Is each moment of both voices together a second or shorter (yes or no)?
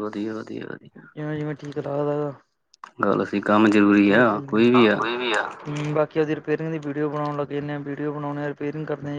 yes